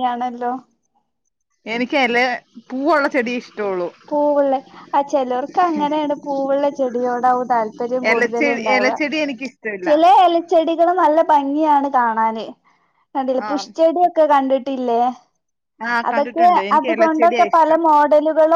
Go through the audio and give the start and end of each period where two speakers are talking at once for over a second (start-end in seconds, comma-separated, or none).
16.1-17.8